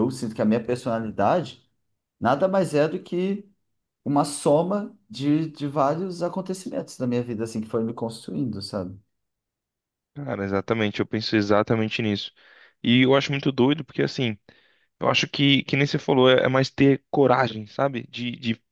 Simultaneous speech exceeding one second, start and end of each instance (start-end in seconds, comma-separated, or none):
none